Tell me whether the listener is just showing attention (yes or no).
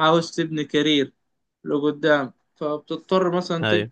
yes